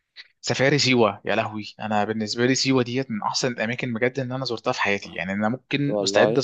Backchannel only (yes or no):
yes